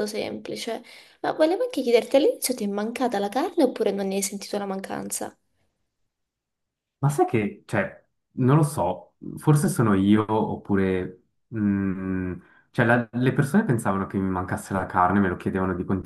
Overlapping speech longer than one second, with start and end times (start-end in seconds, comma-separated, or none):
none